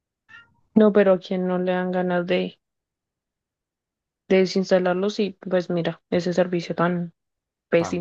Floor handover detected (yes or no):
yes